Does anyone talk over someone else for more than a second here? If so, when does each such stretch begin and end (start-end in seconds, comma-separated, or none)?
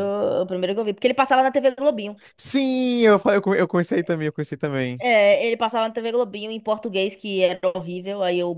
none